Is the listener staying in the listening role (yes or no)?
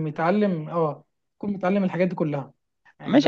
no